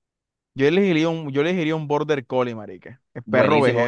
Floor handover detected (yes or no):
yes